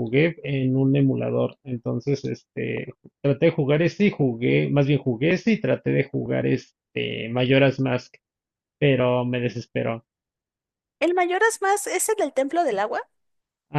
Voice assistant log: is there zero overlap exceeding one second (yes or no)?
yes